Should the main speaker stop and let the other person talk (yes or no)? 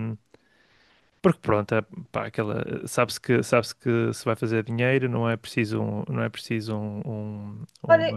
yes